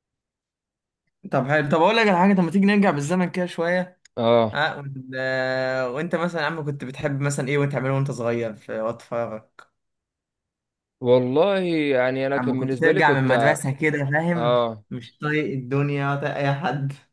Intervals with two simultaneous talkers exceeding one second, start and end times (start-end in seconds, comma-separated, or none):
12.4-13.6